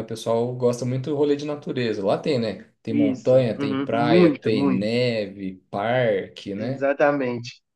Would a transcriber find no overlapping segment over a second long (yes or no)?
no